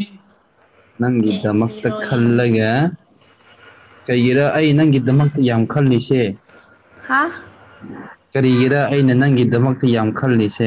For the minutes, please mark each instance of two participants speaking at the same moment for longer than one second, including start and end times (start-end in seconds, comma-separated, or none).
1.3-2.7